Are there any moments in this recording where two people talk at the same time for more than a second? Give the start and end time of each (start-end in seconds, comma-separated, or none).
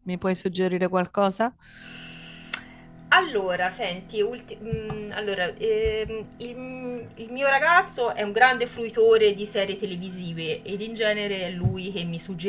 none